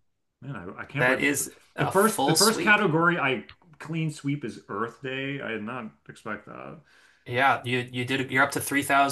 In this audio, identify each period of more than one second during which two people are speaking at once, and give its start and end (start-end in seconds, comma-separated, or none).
0.9-2.8